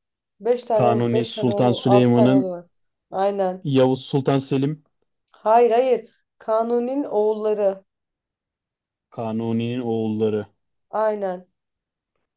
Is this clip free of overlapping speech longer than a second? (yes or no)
no